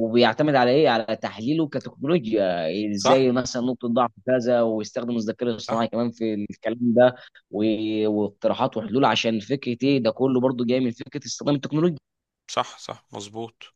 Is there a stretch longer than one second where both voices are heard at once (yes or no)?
no